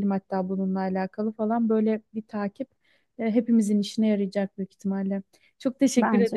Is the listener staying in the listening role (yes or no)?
yes